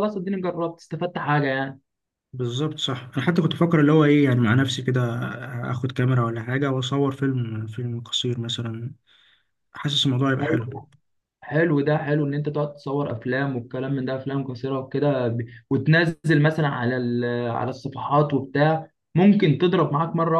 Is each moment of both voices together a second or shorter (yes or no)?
yes